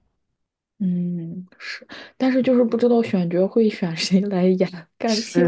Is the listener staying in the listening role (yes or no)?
yes